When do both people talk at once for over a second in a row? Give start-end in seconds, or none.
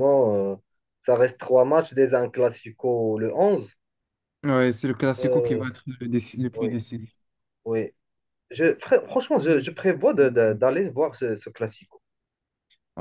none